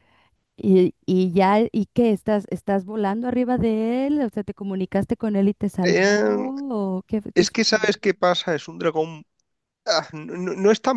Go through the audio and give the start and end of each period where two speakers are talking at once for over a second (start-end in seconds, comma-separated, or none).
none